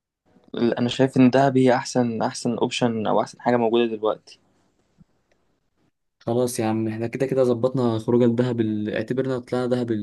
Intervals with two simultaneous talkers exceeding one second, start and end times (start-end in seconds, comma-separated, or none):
none